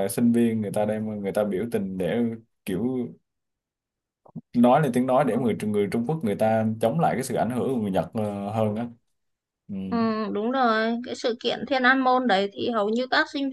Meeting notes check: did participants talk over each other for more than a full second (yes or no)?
no